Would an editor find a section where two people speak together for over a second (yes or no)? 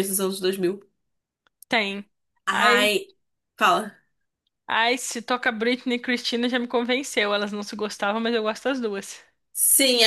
no